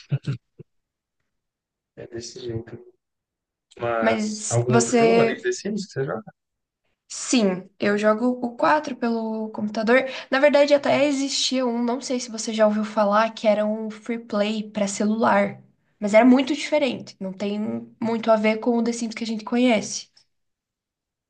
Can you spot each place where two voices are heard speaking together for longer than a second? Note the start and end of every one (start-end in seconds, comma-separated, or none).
4.0-5.4